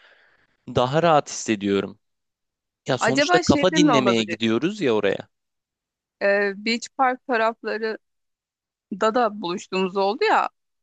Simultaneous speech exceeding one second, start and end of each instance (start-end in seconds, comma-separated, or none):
3.0-4.5